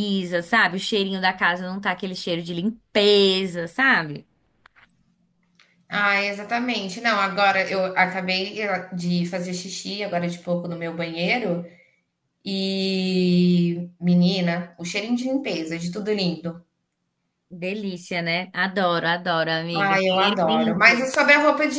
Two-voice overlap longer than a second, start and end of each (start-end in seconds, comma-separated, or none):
19.7-21.1